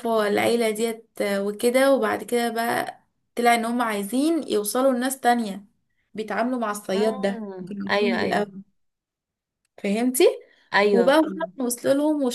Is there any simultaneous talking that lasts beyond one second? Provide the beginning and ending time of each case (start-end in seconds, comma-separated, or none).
6.9-8.4